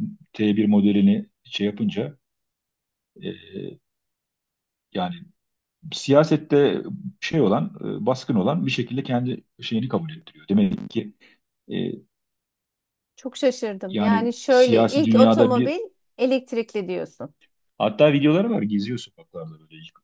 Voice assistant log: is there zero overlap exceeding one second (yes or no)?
no